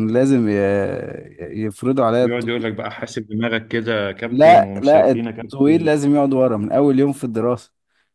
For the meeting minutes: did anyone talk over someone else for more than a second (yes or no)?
yes